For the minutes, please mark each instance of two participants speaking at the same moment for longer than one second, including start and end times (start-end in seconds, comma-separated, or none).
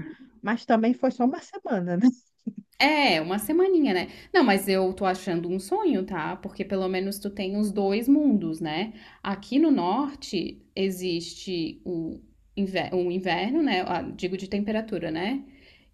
none